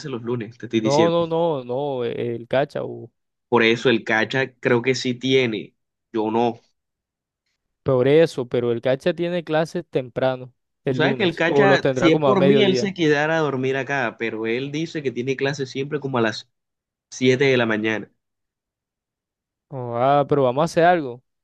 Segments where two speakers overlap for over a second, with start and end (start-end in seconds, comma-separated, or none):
10.8-12.9